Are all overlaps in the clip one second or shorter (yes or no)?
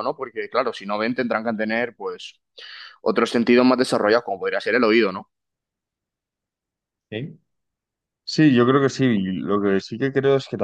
yes